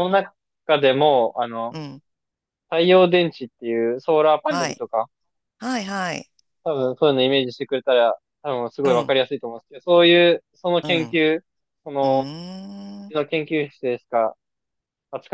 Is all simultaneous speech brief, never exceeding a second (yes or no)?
yes